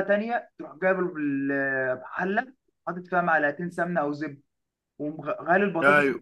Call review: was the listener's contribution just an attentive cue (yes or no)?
yes